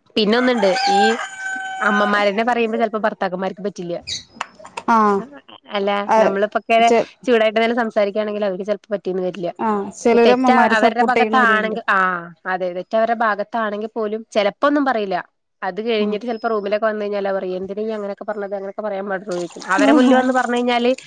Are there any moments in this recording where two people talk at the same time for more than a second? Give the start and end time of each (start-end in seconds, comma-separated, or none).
10.3-11.8